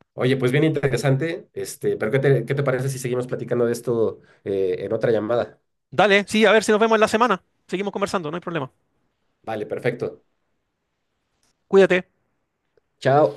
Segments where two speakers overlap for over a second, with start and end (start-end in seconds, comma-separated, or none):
none